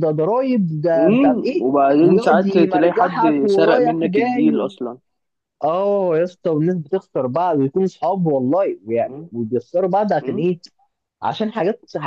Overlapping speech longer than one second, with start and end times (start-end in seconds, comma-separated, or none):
1.0-4.7